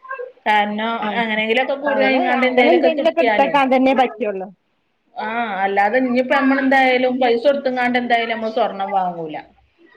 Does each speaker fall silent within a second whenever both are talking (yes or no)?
no